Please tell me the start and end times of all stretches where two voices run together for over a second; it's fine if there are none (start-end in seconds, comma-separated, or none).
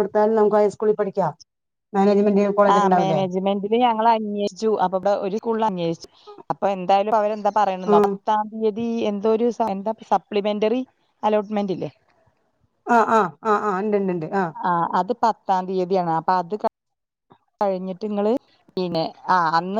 none